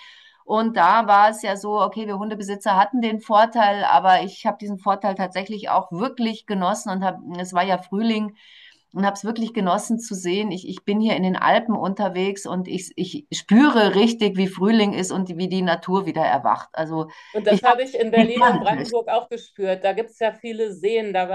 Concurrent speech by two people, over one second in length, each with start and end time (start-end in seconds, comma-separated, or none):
17.5-18.9